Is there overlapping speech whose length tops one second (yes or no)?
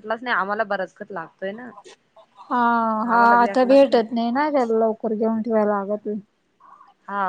no